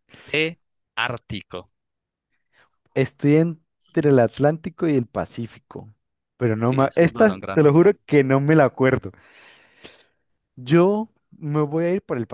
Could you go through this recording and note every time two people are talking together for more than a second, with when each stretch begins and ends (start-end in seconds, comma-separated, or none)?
6.6-7.9